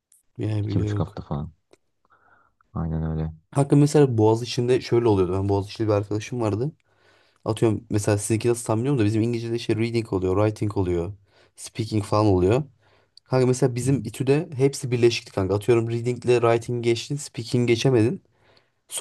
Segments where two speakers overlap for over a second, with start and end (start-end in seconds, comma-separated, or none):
none